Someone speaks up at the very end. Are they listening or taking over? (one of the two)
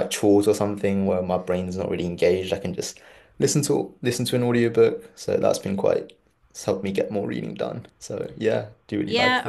taking over